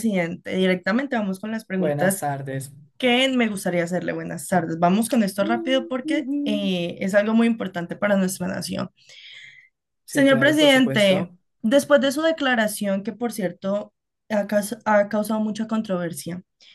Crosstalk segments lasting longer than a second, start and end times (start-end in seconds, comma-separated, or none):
10.1-11.4